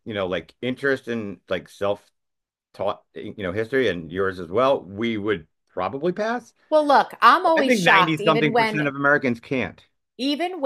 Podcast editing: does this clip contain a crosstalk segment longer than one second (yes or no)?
yes